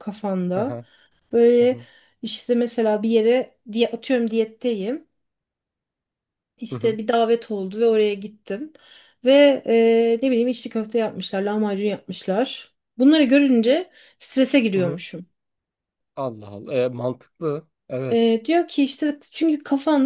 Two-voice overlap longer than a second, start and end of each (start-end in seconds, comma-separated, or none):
none